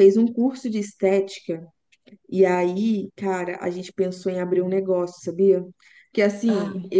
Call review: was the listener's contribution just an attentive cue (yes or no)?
yes